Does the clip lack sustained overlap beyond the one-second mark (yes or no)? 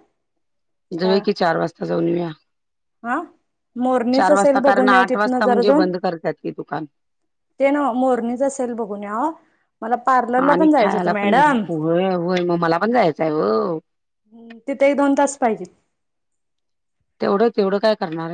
no